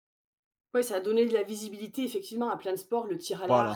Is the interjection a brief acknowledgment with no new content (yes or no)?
yes